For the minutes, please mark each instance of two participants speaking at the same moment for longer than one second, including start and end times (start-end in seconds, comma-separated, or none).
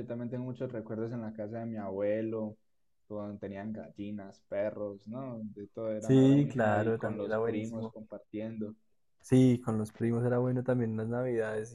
6.0-7.9